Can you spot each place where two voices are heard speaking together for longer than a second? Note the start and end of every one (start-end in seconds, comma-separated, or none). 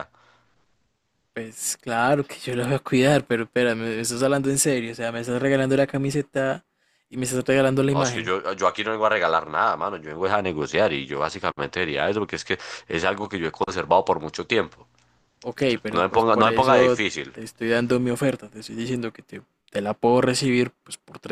15.6-17.3